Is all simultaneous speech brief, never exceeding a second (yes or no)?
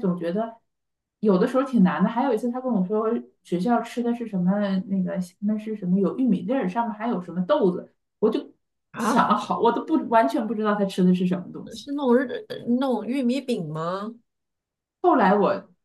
yes